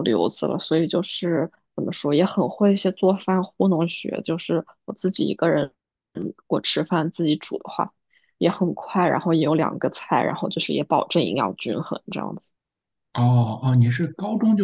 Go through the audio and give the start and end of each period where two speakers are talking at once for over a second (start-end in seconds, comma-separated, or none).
none